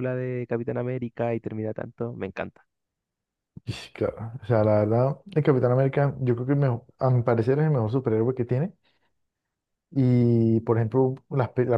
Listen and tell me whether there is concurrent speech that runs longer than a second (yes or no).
no